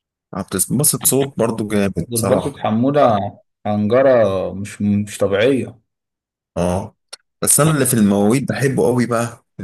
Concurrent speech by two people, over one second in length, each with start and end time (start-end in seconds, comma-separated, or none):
none